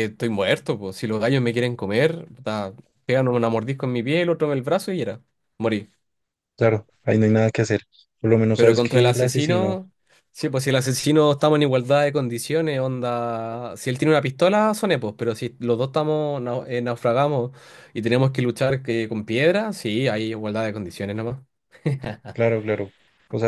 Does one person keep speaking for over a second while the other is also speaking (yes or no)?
yes